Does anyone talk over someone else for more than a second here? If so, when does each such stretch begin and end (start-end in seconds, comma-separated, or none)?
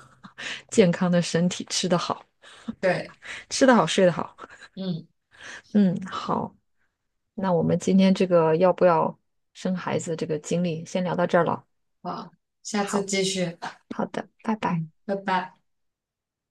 none